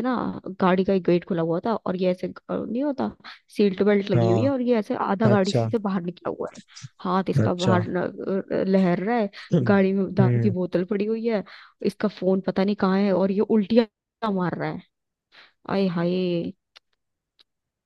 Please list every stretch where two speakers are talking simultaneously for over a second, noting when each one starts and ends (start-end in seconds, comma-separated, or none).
none